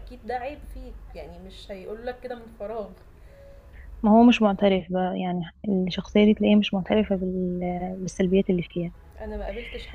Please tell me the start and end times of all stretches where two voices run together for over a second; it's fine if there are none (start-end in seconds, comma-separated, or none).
none